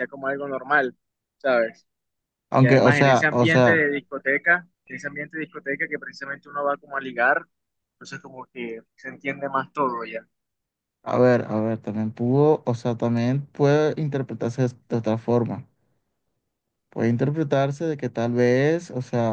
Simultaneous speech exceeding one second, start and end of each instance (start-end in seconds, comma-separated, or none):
2.6-3.8